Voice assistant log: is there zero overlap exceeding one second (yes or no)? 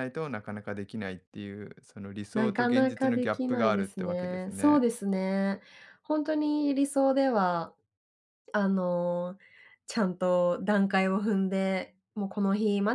no